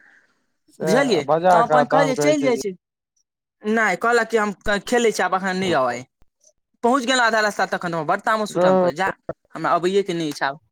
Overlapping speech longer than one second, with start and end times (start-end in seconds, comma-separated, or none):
0.9-2.5